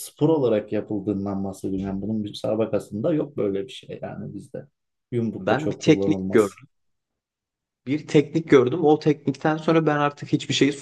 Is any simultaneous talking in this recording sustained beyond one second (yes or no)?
yes